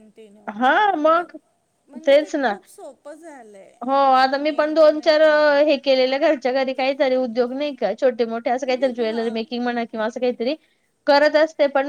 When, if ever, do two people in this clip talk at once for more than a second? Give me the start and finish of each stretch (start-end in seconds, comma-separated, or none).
3.9-5.2